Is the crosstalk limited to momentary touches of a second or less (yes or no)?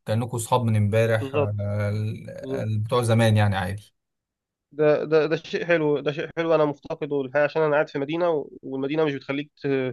yes